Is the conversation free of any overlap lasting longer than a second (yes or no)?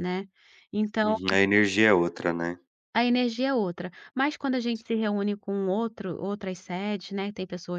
yes